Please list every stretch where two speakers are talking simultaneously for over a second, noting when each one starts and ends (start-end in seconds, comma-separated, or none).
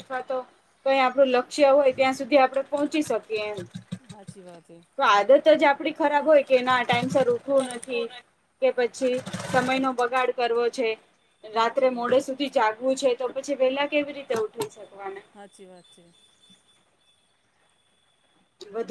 none